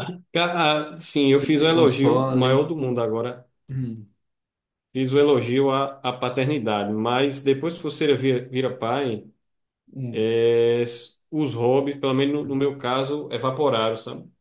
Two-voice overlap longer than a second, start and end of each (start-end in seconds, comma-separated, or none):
1.2-2.6